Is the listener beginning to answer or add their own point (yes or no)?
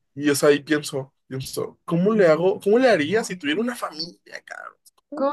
yes